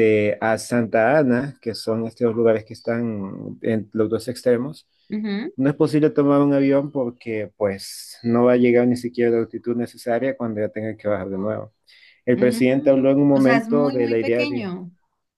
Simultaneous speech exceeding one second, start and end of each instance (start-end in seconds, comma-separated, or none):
12.3-14.7